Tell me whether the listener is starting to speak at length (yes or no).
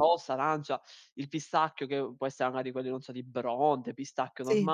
no